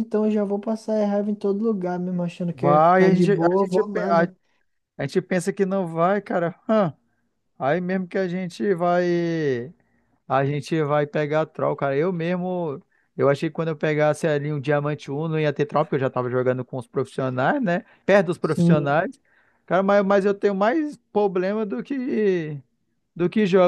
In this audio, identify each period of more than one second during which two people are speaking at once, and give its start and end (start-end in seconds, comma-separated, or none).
2.5-4.2